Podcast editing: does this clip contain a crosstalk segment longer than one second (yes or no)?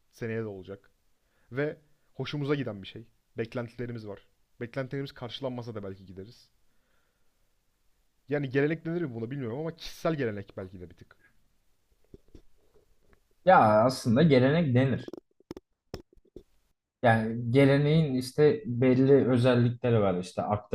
no